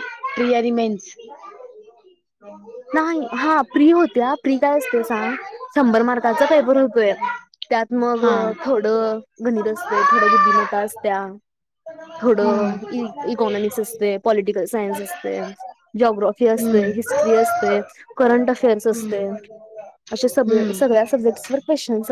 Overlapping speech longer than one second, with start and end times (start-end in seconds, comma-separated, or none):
none